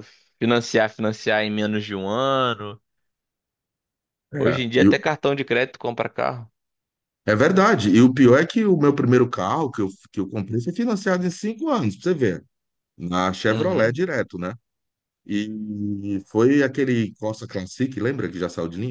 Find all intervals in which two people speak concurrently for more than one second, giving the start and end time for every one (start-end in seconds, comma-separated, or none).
none